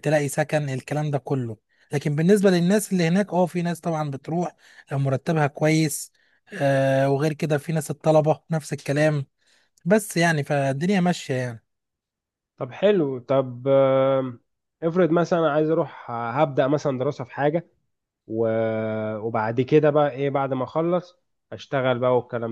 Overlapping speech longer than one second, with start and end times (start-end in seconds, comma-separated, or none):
none